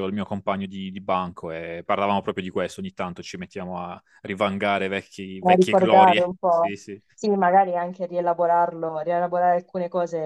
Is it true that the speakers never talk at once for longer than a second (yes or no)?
no